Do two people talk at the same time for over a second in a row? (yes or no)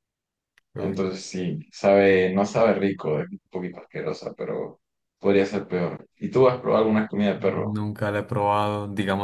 no